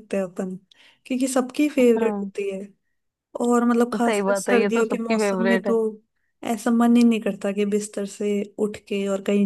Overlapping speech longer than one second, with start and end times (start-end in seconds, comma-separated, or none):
3.9-5.7